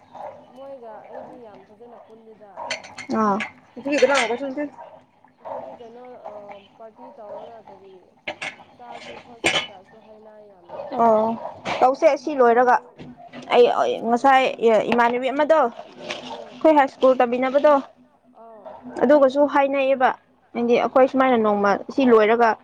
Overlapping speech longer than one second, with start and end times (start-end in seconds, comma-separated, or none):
none